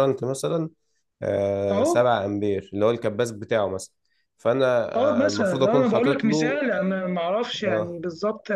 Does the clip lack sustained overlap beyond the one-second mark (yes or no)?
no